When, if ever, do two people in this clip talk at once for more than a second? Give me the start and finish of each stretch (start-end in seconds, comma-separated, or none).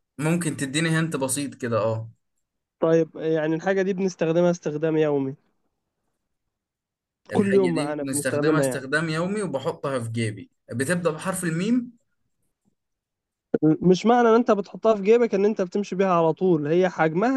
7.3-8.9